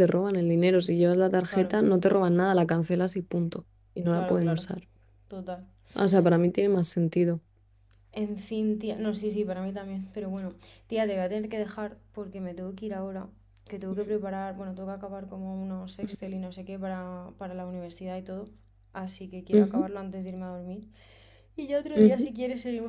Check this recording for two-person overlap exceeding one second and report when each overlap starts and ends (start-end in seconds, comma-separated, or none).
none